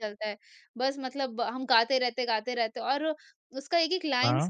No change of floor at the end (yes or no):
yes